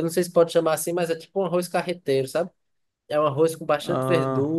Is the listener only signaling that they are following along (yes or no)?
yes